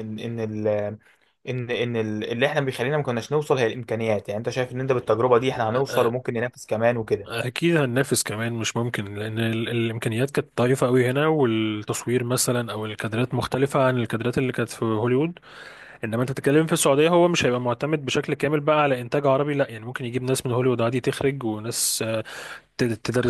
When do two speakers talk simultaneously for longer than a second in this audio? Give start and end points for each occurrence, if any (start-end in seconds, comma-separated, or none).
none